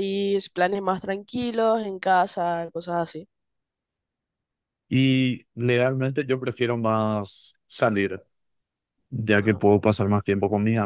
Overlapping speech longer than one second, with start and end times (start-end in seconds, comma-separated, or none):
none